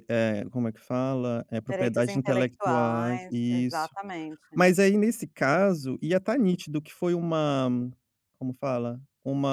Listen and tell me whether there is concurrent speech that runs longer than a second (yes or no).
yes